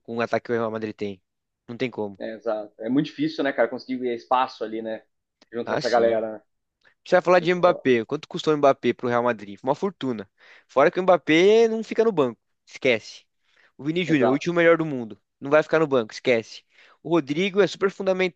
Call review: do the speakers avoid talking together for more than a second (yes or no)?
yes